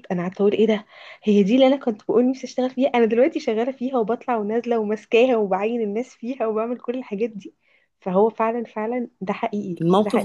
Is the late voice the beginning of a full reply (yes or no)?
yes